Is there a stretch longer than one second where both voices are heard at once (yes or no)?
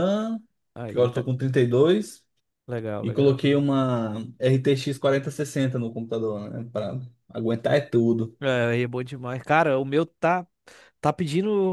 no